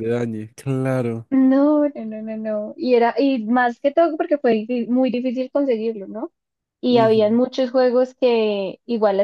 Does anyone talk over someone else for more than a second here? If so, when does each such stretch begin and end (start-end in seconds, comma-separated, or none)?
none